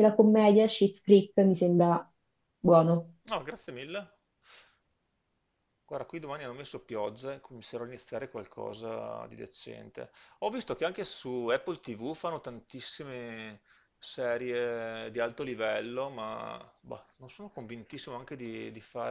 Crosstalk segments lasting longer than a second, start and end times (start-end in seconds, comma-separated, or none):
none